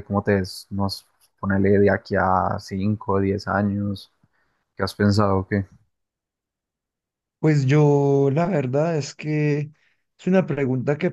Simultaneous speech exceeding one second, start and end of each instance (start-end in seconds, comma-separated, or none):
none